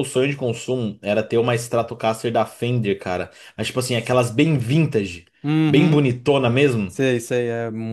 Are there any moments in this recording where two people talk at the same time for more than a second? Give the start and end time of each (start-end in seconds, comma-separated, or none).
none